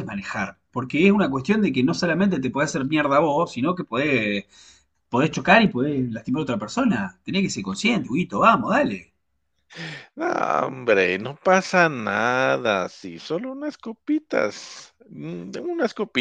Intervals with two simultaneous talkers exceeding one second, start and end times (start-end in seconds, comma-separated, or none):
none